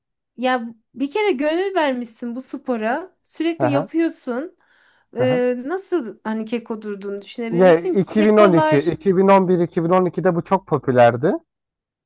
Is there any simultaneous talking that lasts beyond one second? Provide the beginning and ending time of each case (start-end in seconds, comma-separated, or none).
7.5-8.9